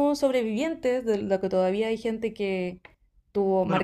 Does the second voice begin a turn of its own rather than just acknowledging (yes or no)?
yes